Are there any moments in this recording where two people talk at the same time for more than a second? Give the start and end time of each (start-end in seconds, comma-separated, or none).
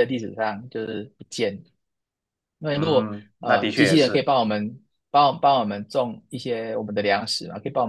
2.8-4.3